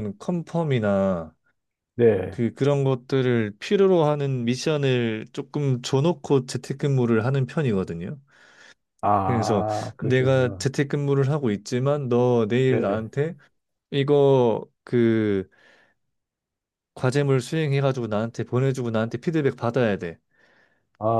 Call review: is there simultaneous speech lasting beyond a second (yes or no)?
yes